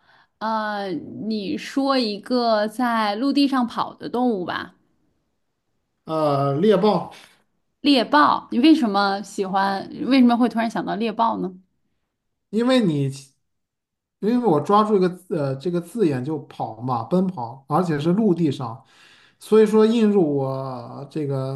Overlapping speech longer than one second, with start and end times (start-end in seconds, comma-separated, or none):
none